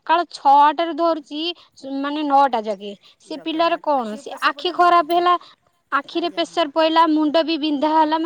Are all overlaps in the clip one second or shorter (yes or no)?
no